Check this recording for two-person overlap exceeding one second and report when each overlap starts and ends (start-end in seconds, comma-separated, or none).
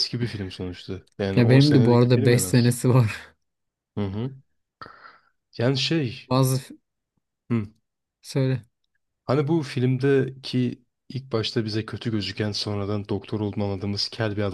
1.4-2.7